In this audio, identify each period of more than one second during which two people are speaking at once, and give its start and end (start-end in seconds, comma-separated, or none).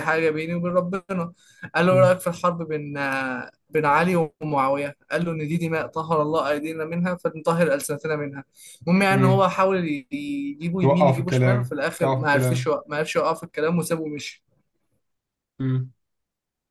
10.8-12.7